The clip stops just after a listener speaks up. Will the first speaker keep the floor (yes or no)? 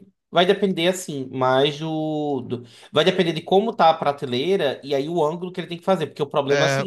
yes